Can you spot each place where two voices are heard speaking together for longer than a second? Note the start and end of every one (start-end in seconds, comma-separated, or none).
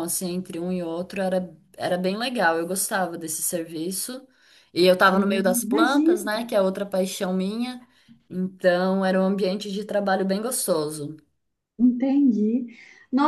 5.0-6.2